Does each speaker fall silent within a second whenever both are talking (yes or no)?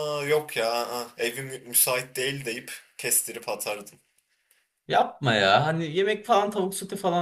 yes